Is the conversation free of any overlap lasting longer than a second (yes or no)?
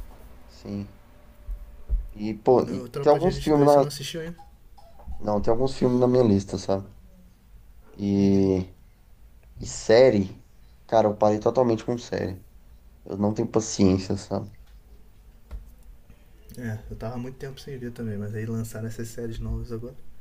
no